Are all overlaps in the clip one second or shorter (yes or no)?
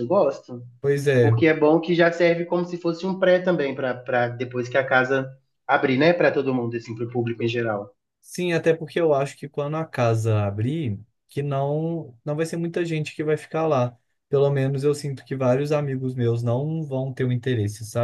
yes